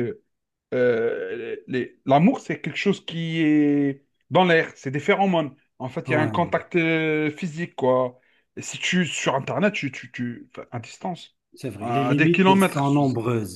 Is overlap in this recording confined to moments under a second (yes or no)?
no